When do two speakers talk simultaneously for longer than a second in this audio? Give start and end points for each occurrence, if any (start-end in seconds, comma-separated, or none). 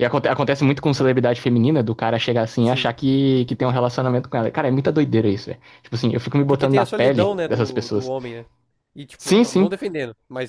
6.4-8.1